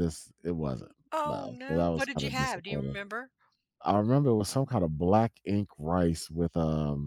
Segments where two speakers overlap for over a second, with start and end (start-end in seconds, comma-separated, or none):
1.1-3.0